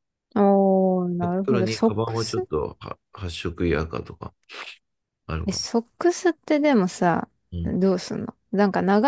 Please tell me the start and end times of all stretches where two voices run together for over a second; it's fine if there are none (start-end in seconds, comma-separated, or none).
1.2-2.5